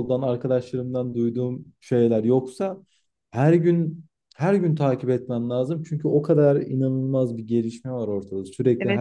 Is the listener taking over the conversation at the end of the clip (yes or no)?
yes